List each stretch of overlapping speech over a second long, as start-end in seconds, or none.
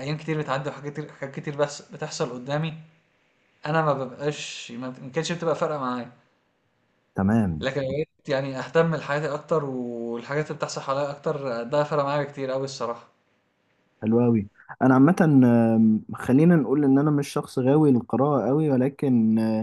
none